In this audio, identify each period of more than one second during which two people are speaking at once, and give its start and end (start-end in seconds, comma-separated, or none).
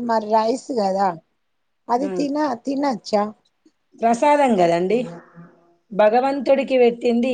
none